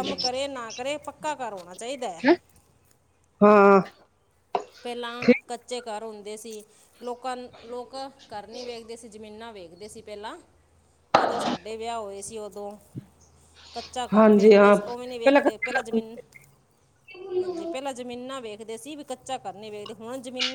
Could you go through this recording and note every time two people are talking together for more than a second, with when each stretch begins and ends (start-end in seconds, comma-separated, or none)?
14.1-16.0